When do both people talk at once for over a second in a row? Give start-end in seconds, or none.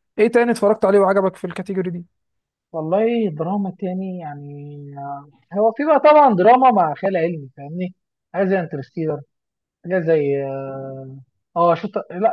none